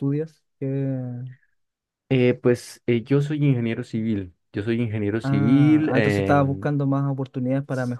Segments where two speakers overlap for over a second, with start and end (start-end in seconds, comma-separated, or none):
5.2-6.7